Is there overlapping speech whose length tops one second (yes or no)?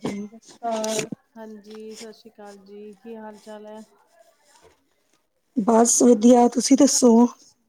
no